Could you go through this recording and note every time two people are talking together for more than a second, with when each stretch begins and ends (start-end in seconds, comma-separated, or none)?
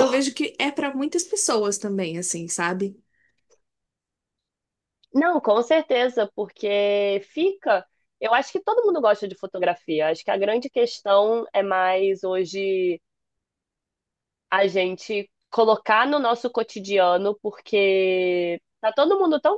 none